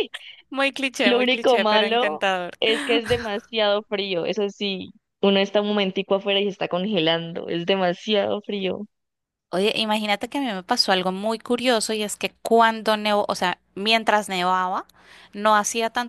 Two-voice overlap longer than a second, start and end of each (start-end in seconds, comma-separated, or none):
1.0-2.5